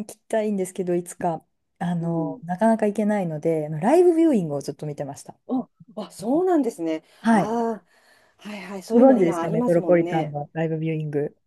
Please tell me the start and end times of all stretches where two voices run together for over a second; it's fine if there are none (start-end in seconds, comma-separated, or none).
8.9-10.4